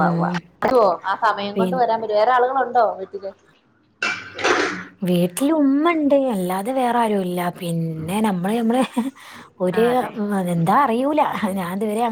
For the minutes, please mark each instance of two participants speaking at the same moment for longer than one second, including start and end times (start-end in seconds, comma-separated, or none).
none